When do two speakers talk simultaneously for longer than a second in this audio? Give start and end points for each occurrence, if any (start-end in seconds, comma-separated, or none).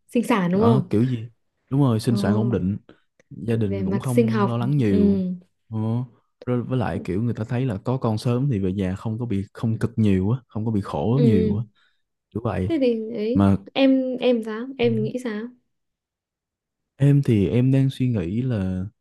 3.5-5.2